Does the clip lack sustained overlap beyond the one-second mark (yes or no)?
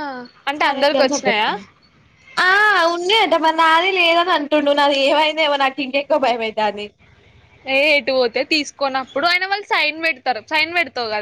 yes